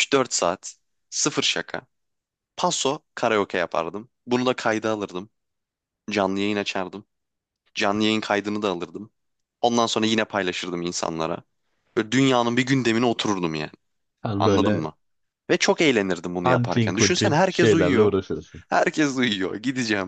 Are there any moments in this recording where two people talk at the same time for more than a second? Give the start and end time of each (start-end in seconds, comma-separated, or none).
16.4-18.1